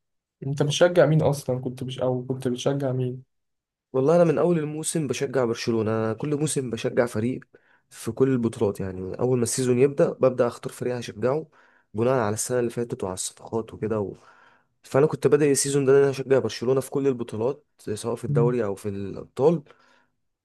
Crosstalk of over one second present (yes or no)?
no